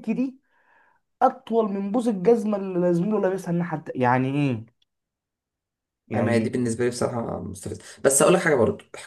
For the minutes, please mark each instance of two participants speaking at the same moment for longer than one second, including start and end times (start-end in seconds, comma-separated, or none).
none